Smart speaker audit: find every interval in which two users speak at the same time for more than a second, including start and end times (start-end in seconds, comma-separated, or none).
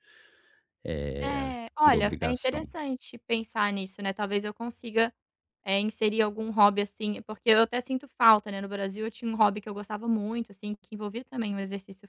1.2-2.6